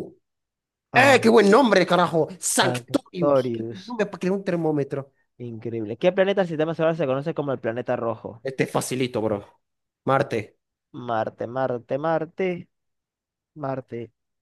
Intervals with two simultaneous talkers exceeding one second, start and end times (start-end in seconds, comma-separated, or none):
2.6-4.0